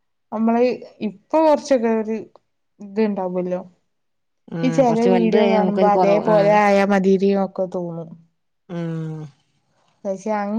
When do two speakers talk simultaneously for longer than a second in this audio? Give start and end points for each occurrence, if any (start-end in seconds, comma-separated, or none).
4.7-6.5